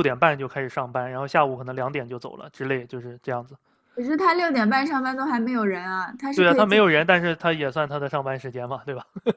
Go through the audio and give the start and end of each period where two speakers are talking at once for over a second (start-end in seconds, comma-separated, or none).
none